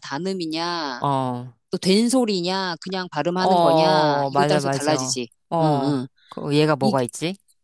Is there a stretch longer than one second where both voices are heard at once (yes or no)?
yes